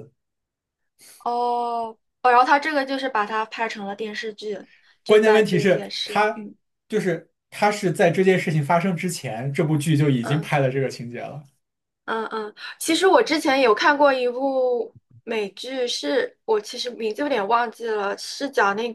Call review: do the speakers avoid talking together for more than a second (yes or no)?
no